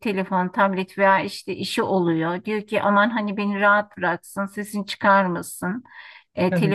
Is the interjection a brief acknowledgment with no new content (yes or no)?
yes